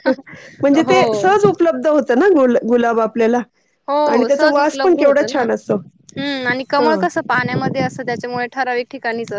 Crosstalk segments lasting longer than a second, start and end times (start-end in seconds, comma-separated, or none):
4.1-5.5